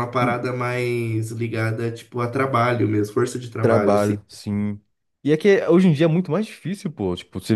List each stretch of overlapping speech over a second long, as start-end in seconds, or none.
none